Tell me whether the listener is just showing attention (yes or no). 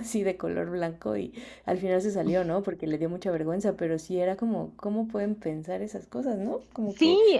no